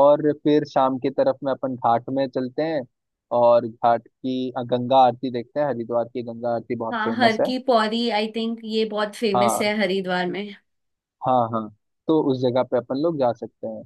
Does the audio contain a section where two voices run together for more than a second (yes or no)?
no